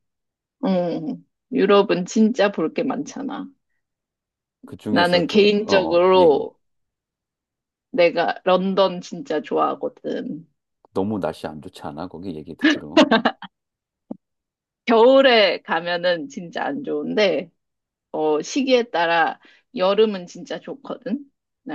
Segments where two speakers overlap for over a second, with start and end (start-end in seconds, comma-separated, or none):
4.9-6.4